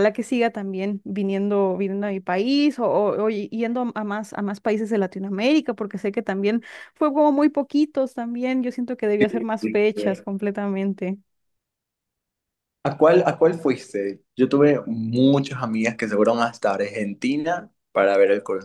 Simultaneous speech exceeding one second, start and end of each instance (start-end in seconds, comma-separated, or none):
none